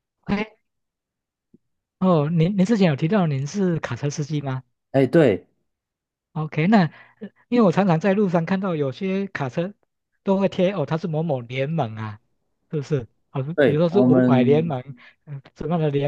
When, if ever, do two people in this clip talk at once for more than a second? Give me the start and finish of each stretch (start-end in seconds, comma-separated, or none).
13.5-14.7